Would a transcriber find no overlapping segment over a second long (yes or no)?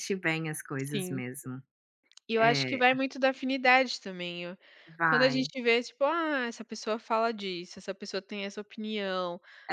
yes